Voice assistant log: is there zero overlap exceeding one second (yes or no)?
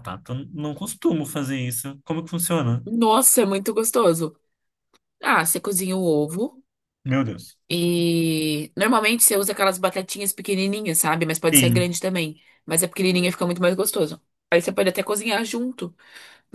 yes